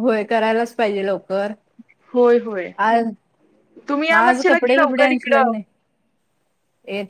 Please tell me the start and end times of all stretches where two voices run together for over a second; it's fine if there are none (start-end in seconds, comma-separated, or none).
4.1-5.5